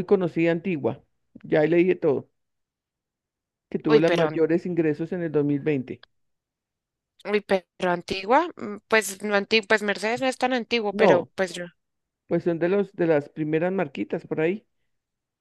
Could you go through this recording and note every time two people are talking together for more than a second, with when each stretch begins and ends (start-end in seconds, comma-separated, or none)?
none